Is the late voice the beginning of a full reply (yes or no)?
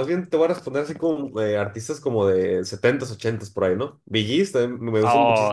yes